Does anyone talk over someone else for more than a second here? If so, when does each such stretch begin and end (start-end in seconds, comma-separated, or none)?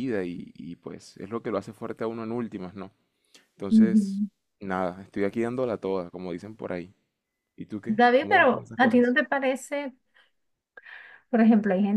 7.8-9.2